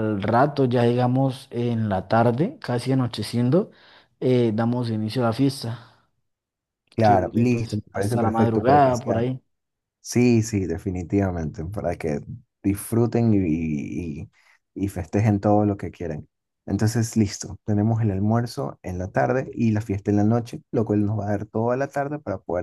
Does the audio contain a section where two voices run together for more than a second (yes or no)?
yes